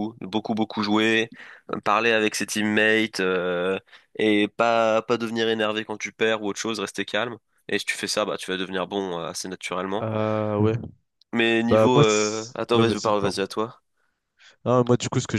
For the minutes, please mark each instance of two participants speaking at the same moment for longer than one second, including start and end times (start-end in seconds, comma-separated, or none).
11.7-13.4